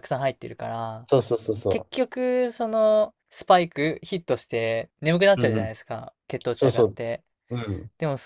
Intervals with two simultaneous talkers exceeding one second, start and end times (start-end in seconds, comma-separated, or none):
none